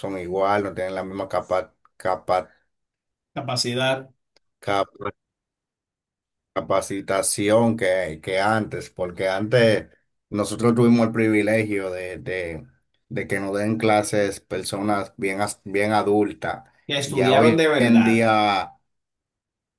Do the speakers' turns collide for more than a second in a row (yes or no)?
yes